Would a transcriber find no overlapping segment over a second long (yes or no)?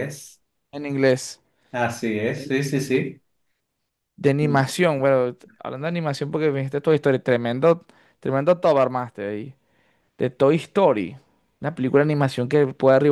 yes